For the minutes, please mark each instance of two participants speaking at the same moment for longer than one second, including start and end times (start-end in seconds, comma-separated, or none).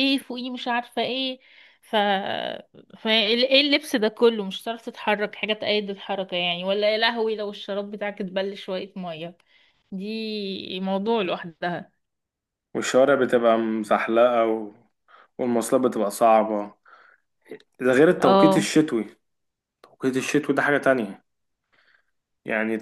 none